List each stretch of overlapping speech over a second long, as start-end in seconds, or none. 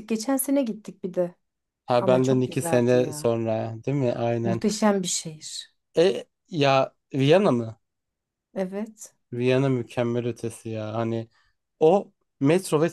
2.0-3.3